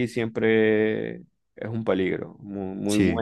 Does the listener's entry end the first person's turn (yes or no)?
no